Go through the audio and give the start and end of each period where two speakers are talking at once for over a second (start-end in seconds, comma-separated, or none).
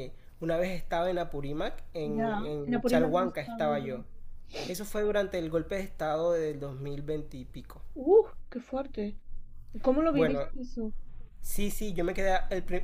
2.2-4.0